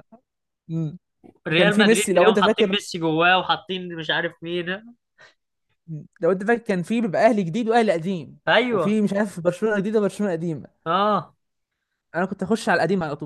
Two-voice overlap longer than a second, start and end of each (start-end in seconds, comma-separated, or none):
1.5-2.8